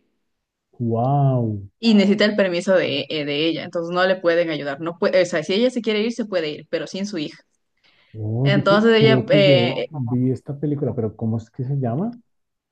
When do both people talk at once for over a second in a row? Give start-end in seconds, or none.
8.4-9.9